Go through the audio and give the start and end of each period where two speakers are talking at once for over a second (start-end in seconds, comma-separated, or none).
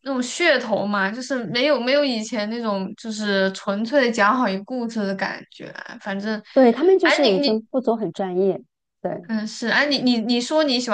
none